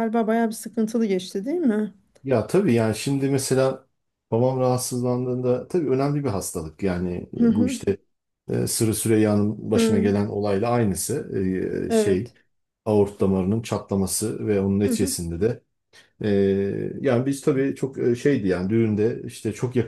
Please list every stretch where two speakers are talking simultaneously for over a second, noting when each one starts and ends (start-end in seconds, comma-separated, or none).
none